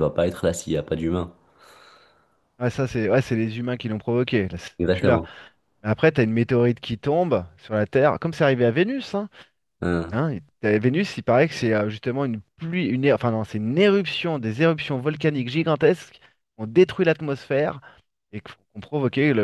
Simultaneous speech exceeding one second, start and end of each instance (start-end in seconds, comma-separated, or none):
none